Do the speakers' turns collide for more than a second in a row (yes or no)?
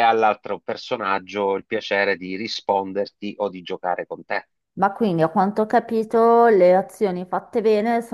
no